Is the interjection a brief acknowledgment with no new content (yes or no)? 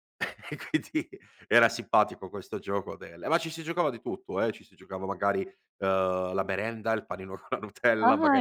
no